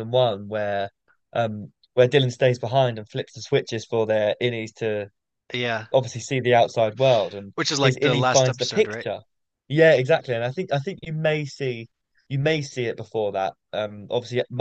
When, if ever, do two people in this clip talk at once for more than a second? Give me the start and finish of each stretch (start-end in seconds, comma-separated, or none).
7.5-9.1